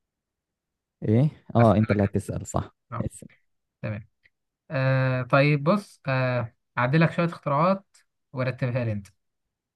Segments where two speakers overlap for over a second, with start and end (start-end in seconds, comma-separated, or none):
none